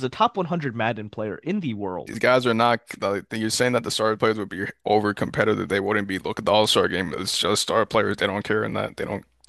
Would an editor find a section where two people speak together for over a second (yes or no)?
no